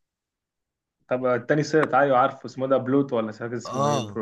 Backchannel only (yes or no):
no